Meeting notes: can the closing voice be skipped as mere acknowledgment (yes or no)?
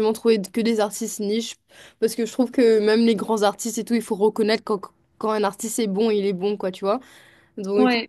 yes